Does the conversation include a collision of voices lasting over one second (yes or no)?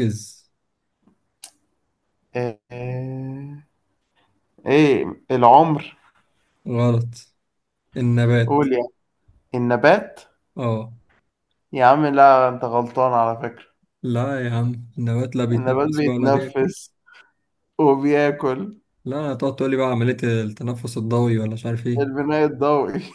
yes